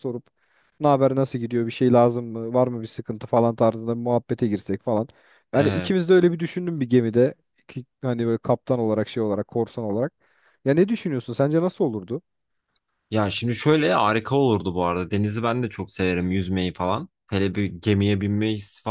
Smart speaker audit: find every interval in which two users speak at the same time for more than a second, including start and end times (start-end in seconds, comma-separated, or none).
none